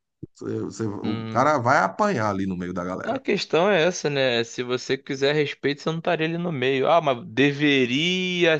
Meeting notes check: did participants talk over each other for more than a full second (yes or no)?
no